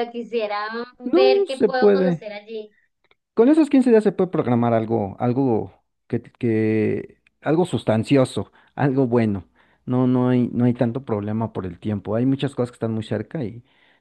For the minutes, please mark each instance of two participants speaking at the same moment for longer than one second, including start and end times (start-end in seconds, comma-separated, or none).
1.0-2.3